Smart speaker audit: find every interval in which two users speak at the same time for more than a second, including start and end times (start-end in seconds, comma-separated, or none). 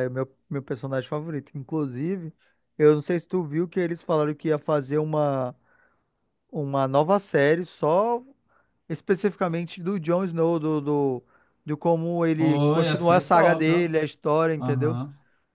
12.3-13.9